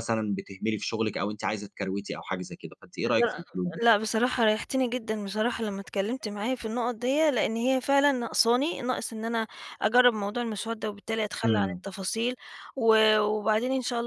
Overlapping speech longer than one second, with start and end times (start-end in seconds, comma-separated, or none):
none